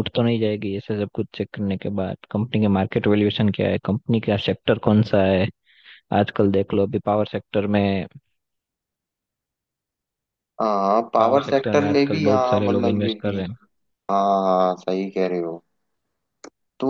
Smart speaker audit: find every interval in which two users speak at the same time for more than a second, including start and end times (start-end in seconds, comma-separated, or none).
11.2-13.4